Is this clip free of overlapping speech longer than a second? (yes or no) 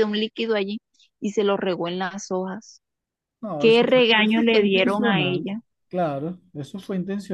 no